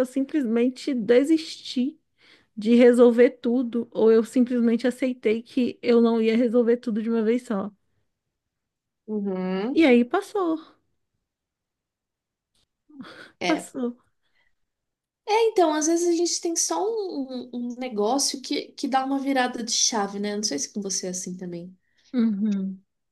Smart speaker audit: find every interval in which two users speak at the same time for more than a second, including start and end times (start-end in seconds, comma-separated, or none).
none